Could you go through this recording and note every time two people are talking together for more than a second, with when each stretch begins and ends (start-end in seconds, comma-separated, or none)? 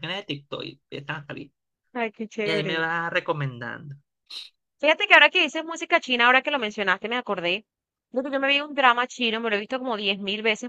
none